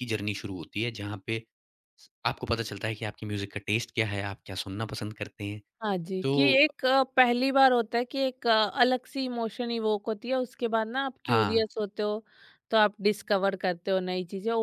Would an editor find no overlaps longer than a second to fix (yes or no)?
yes